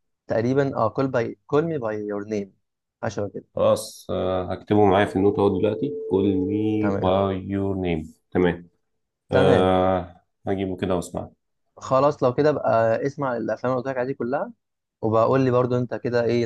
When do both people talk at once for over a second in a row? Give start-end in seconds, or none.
none